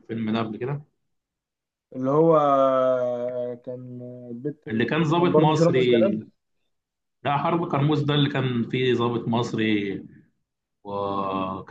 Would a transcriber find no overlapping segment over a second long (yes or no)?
no